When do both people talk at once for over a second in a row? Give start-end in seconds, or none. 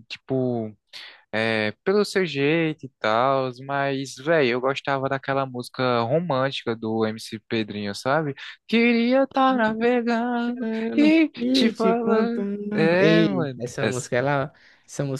10.4-13.9